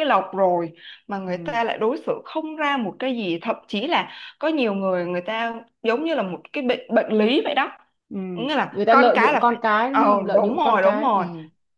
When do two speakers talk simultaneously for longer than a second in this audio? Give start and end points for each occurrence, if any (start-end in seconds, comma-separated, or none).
8.7-11.2